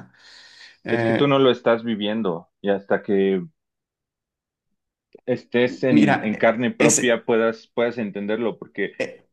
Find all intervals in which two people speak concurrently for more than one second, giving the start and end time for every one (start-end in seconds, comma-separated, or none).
5.9-7.2